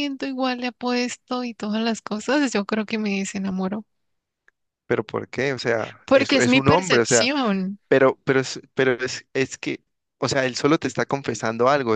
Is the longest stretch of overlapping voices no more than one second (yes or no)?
no